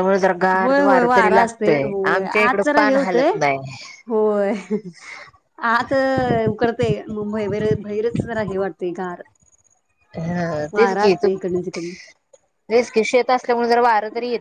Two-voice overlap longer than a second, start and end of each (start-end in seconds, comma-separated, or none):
0.6-3.3